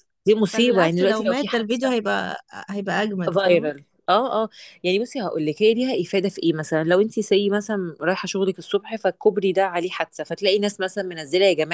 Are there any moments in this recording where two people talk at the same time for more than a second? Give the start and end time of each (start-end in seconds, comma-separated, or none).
0.5-1.9